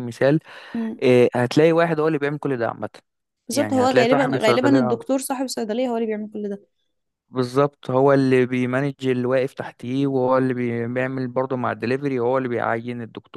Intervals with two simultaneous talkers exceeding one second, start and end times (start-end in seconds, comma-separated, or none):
3.5-5.0